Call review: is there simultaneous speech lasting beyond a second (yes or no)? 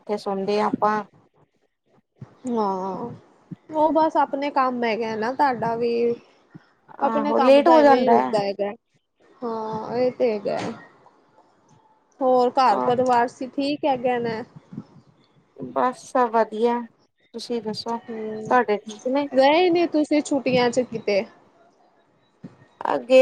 yes